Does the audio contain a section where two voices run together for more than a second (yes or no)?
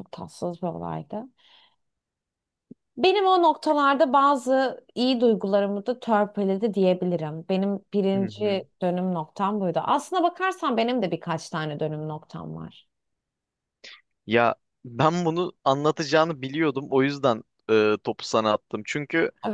no